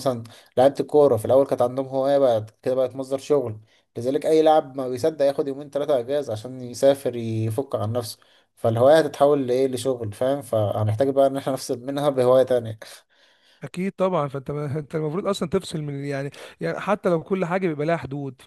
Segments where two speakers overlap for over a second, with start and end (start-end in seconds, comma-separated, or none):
none